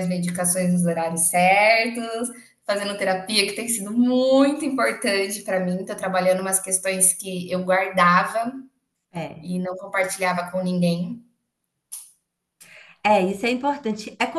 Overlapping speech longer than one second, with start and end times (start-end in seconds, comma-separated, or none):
none